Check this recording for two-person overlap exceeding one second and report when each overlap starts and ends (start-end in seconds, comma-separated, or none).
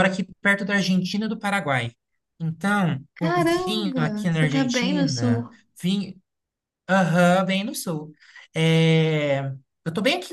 3.1-5.5